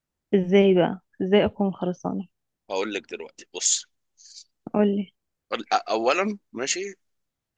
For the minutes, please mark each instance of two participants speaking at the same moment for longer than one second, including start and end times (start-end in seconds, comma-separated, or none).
none